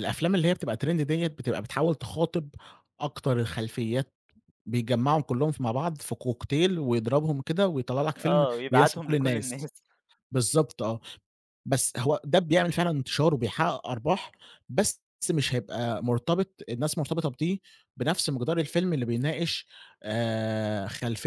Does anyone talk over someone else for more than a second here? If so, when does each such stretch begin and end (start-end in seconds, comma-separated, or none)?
8.2-9.7